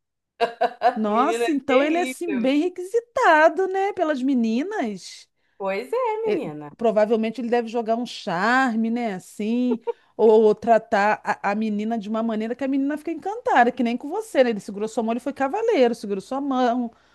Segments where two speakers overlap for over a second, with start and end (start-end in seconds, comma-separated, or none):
1.1-2.6